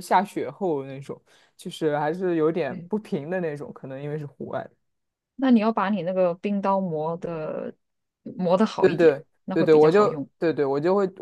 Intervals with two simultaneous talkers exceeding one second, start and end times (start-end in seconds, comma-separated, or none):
8.8-10.3